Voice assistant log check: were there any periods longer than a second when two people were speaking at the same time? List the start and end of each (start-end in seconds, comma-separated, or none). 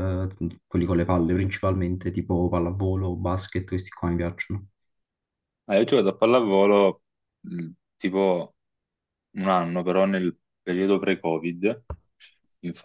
none